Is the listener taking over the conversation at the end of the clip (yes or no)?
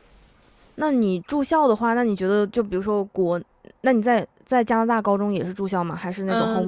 yes